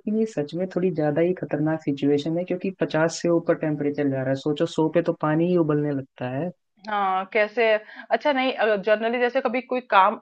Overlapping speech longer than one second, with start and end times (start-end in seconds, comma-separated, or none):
none